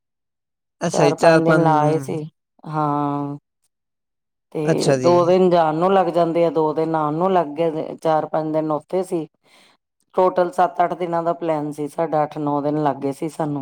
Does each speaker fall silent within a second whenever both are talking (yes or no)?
no